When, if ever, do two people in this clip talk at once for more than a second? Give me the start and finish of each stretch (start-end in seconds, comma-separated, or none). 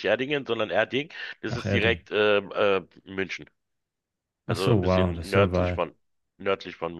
4.5-5.9